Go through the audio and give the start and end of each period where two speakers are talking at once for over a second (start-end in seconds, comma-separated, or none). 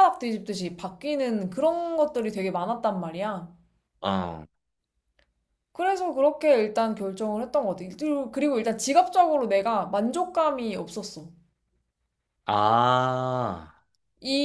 none